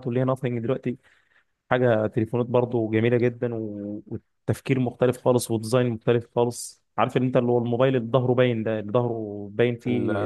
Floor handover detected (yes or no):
yes